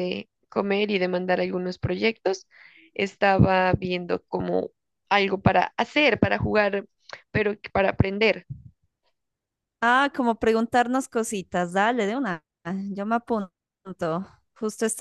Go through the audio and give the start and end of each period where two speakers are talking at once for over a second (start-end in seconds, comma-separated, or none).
none